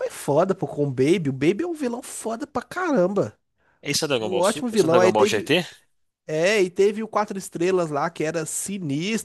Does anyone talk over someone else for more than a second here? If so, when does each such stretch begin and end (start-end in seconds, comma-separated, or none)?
4.2-5.5